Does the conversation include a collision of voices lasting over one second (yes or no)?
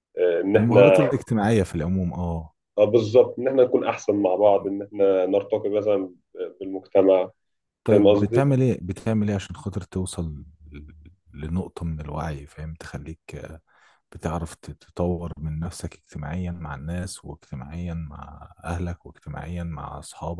no